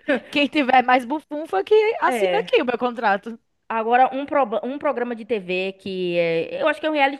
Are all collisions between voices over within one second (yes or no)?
yes